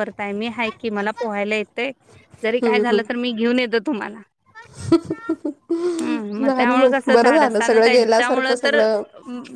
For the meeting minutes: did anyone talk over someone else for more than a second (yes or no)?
yes